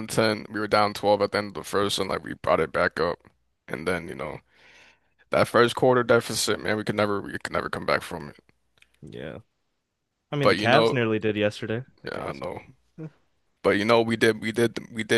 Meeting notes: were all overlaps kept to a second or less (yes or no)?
yes